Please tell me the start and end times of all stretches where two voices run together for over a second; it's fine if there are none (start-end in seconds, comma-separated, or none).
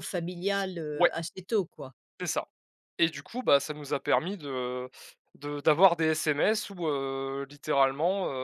none